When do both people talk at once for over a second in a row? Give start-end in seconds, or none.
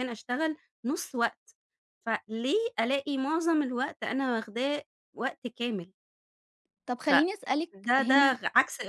7.1-8.4